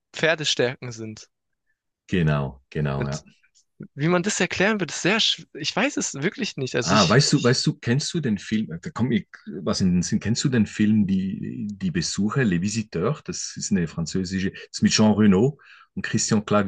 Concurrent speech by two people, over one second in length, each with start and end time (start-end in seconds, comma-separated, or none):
none